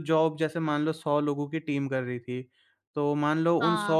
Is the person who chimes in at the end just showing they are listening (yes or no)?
yes